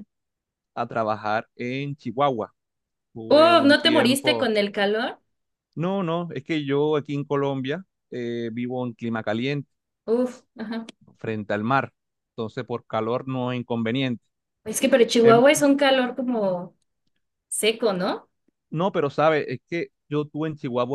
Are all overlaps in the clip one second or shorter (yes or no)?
no